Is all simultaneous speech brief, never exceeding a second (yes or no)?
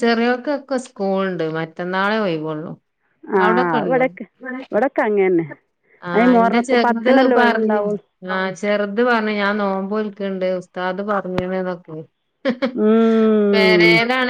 no